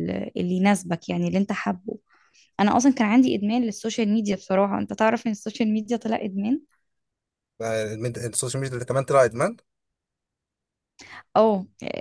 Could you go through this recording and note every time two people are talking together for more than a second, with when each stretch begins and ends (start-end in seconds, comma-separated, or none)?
none